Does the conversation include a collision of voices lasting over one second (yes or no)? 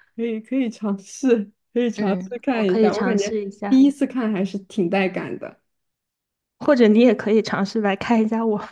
yes